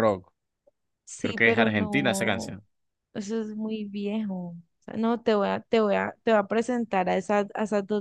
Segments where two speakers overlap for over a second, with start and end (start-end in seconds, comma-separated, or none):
1.2-2.6